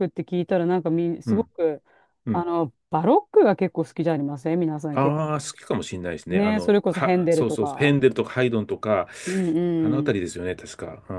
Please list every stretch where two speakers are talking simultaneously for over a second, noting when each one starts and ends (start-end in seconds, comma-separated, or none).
6.3-8.0